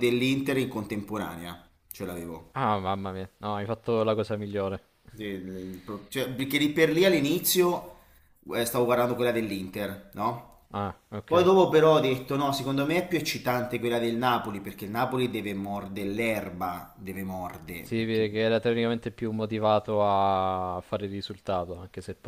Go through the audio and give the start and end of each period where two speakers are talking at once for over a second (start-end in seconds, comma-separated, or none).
none